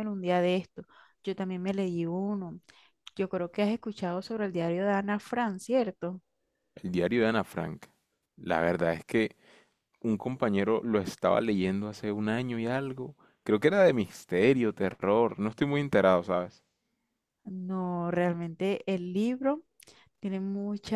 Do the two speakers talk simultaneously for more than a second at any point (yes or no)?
no